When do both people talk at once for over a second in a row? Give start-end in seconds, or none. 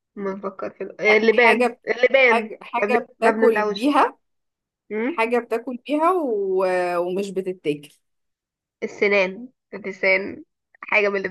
1.0-3.9